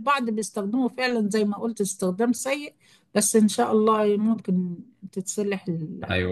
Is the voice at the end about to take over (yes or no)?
yes